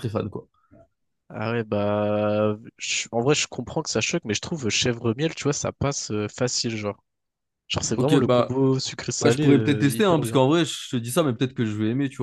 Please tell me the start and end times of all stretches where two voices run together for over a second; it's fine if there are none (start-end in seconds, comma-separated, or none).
9.2-10.4